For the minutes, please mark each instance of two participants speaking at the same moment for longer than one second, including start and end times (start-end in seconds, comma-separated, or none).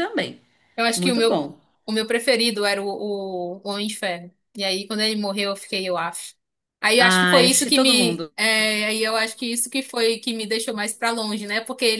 7.0-8.3